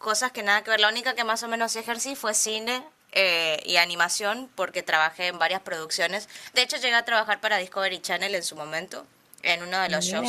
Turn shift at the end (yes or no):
no